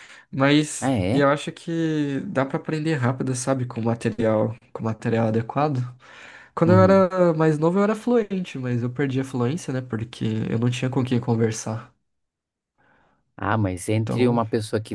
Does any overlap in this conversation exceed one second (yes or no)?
no